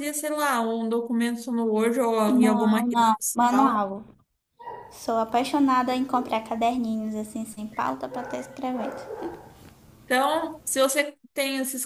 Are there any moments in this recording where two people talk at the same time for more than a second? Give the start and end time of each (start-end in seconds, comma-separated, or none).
2.3-3.8